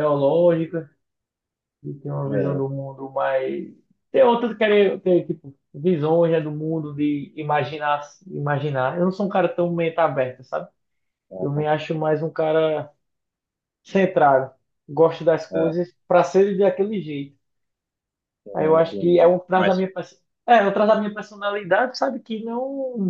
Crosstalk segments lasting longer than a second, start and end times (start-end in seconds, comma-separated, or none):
18.5-19.9